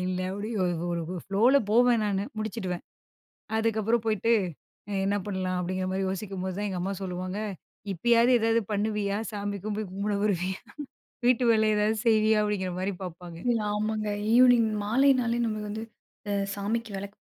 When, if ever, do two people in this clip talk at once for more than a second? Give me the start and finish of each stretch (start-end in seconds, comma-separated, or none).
none